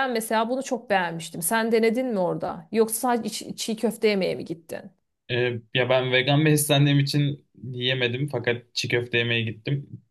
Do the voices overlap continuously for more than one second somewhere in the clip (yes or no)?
no